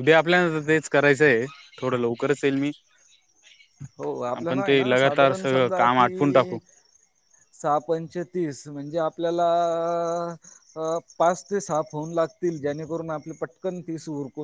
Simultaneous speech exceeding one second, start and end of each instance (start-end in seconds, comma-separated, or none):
4.3-6.6